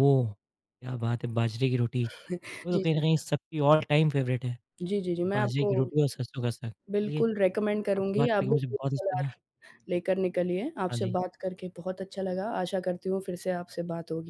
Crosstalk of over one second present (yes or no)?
yes